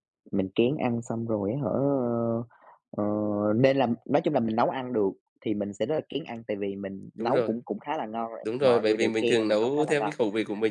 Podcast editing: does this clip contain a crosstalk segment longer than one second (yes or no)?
yes